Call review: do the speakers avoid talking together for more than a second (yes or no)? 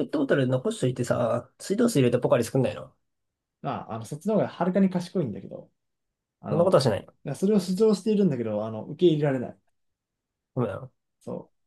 yes